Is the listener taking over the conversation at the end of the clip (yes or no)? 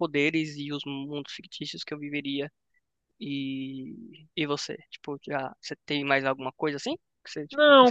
yes